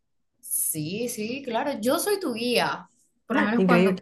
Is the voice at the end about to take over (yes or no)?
no